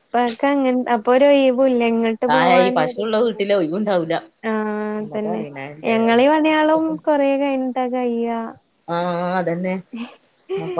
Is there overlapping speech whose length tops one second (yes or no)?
no